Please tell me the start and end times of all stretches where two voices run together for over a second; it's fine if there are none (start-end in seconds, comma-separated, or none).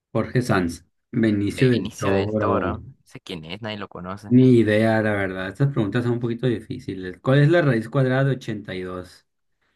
1.5-2.7